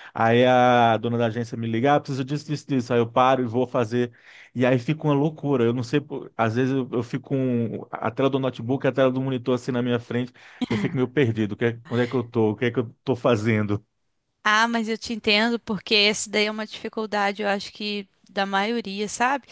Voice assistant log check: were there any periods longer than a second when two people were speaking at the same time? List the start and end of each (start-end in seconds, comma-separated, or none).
none